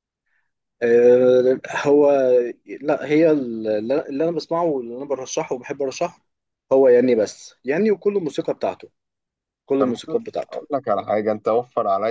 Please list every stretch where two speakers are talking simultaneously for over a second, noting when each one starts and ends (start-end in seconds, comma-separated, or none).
none